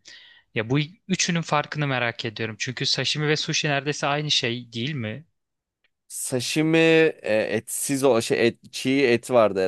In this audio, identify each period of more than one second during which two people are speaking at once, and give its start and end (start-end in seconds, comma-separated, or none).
none